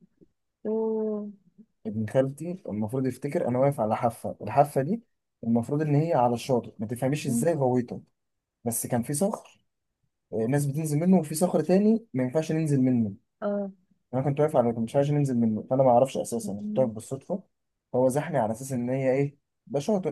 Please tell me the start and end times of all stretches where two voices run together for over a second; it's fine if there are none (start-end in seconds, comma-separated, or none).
none